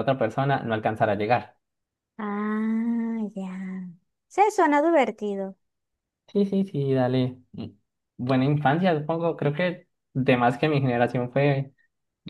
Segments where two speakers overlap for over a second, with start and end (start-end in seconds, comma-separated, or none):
none